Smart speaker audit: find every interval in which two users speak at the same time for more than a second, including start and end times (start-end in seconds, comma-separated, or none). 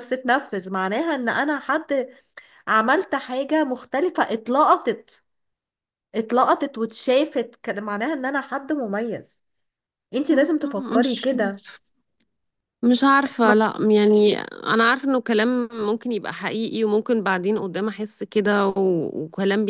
none